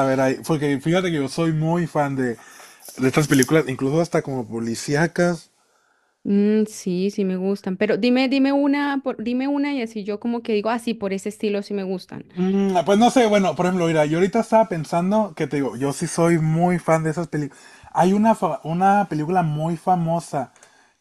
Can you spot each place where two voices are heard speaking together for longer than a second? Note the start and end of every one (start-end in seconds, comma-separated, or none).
none